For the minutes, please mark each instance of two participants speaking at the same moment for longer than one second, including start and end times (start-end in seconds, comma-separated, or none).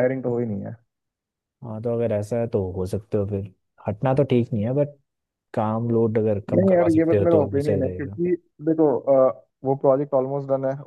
6.6-8.2